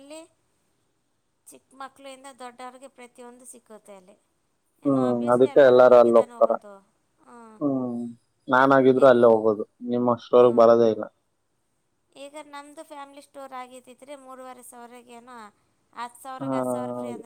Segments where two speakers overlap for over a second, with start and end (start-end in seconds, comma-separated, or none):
4.8-6.5